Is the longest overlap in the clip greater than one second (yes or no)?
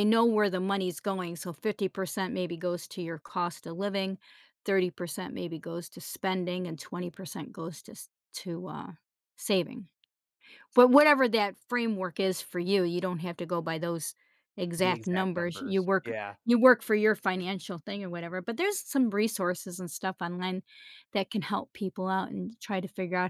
yes